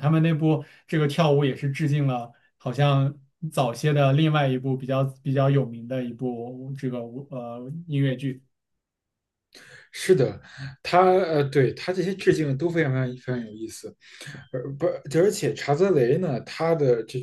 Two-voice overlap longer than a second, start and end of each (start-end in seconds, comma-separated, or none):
none